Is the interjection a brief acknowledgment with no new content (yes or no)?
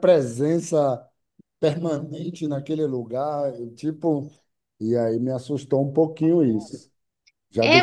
no